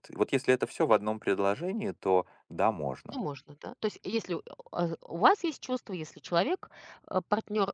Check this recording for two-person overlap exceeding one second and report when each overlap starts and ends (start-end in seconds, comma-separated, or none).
none